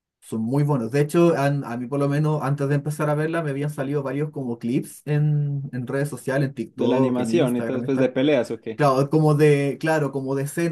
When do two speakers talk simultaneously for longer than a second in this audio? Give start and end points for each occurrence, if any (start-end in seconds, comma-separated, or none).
6.8-8.1